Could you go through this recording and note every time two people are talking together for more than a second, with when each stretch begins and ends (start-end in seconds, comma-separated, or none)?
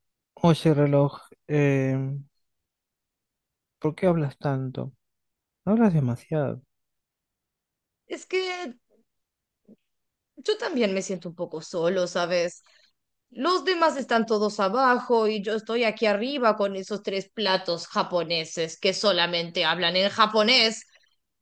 none